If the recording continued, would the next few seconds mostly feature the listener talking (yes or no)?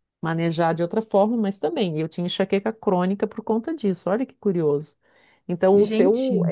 no